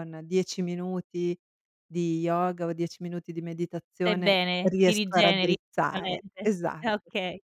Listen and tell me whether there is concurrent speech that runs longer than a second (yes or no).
yes